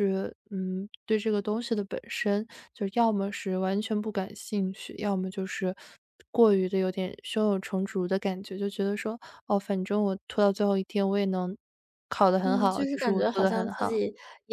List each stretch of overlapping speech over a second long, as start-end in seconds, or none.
12.4-14.0